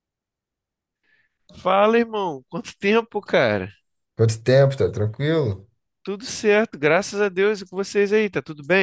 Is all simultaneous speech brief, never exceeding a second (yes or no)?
yes